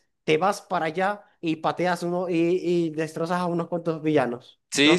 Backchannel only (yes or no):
no